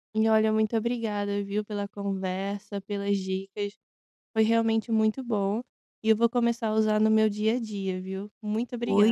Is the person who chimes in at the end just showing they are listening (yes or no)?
no